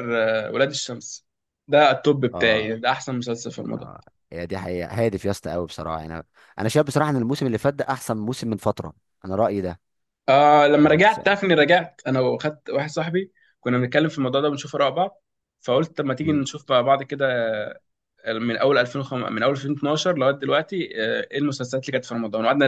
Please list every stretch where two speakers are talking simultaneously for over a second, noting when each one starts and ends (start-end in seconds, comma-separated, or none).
none